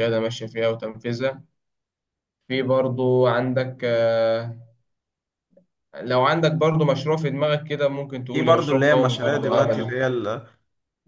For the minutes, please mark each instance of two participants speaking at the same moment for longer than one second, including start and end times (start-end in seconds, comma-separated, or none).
8.3-9.9